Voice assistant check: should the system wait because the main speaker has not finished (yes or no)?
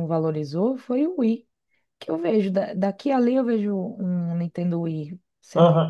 no